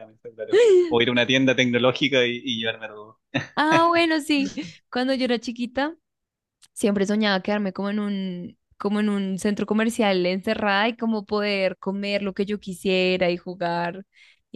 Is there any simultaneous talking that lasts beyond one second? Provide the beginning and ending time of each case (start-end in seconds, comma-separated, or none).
none